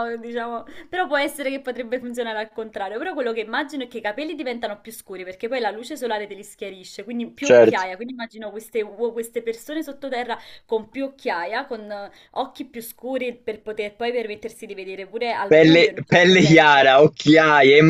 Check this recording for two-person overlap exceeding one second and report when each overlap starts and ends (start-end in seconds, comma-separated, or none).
15.5-16.9